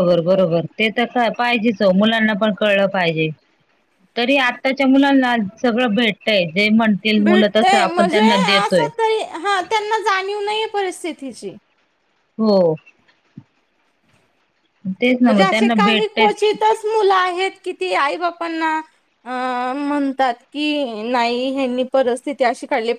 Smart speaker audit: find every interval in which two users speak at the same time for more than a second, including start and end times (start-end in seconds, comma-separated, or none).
15.2-16.6